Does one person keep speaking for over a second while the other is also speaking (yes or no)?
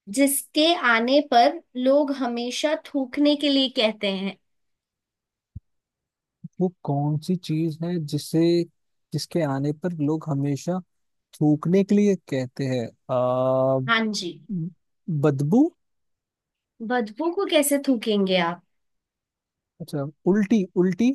no